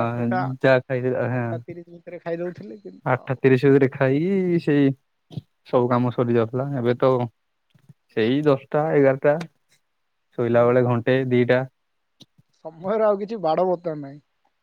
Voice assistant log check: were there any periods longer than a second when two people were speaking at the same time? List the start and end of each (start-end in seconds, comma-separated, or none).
none